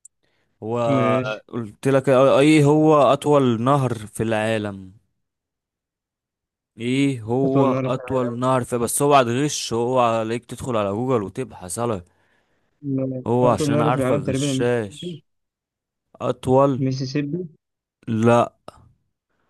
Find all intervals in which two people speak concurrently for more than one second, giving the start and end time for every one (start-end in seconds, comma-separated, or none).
13.3-15.2